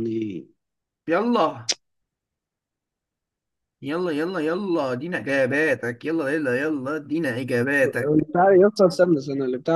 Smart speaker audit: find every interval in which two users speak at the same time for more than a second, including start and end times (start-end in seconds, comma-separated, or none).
none